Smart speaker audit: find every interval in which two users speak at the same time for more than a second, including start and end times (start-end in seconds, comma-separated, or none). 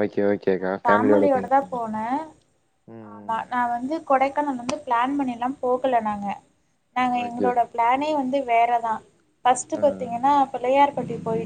none